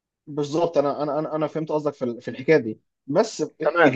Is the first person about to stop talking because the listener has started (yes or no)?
no